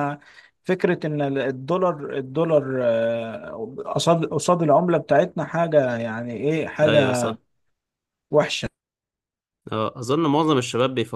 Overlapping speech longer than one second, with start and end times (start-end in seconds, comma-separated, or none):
none